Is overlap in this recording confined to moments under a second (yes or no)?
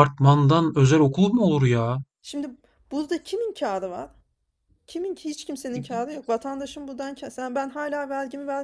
yes